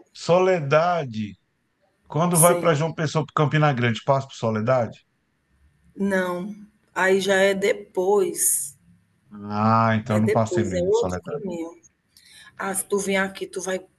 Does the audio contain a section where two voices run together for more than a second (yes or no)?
yes